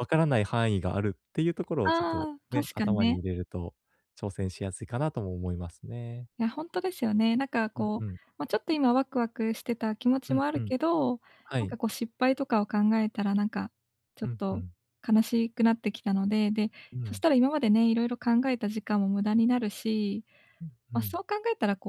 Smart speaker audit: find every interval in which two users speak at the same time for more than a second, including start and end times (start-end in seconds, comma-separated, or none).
1.8-3.2